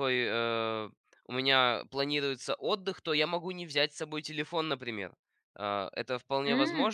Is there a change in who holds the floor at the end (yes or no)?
no